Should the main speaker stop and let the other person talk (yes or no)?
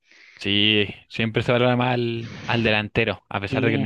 no